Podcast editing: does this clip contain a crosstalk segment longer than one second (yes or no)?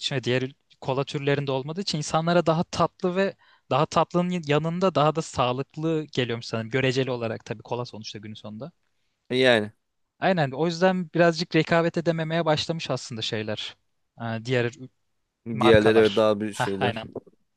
yes